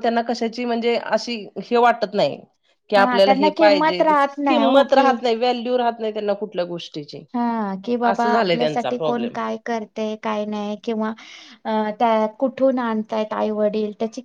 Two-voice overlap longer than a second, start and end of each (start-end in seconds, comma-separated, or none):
3.0-5.1